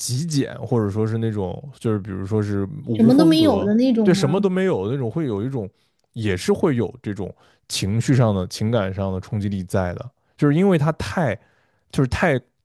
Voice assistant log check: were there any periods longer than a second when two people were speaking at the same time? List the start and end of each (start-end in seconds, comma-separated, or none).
2.9-4.5